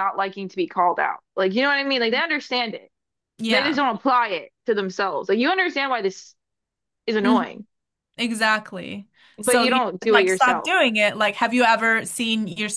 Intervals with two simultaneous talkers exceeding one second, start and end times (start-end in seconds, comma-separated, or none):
9.4-10.7